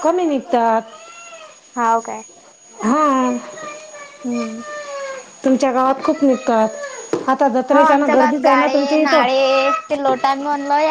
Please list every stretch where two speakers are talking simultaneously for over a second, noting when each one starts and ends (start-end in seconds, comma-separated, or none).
7.7-9.2